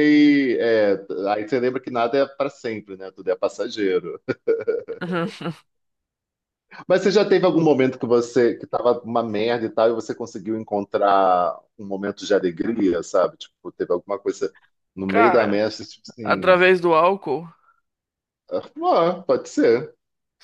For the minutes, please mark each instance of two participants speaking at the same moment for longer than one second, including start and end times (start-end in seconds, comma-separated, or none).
none